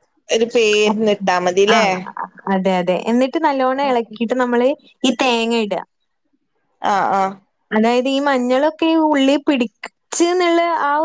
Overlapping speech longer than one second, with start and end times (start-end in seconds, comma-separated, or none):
none